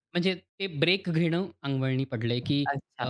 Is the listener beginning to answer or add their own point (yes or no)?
no